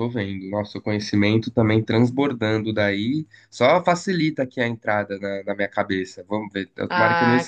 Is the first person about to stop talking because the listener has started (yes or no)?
yes